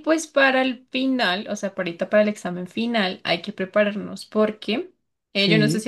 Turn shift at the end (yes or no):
no